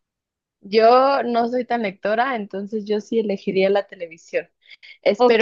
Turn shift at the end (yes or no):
no